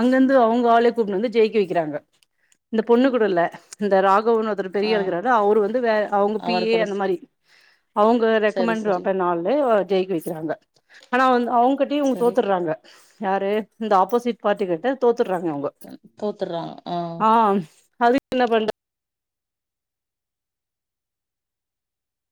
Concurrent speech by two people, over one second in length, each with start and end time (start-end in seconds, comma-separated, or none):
none